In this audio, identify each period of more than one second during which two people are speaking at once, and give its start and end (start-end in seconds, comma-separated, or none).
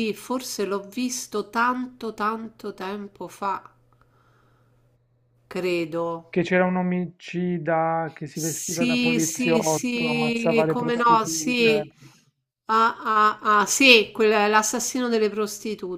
8.3-11.9